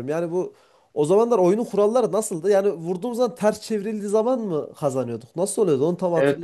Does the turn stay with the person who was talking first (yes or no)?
no